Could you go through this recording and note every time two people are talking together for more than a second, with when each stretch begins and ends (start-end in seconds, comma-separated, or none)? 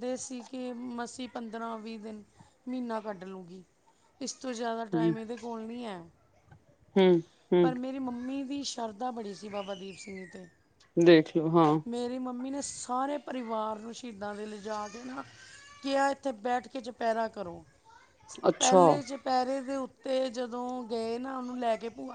none